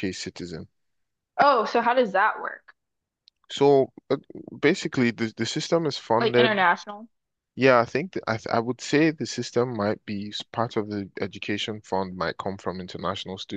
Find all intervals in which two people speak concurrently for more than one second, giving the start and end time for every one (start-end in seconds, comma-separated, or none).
none